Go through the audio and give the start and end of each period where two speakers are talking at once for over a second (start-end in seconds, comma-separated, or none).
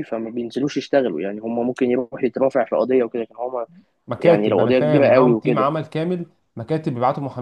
4.2-5.7